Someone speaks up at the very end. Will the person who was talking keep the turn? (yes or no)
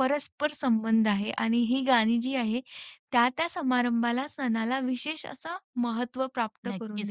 no